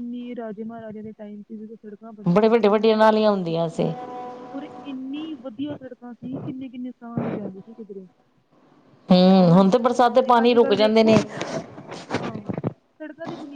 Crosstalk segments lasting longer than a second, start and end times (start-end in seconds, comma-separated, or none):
none